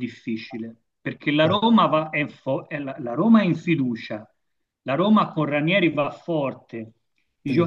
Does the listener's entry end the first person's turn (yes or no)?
no